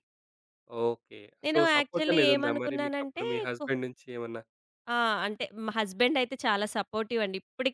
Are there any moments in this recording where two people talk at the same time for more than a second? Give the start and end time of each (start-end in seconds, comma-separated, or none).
1.4-3.6